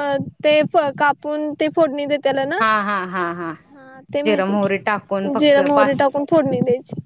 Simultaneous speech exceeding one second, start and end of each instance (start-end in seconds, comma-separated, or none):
4.2-6.0